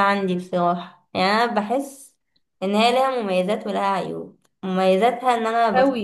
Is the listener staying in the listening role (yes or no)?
yes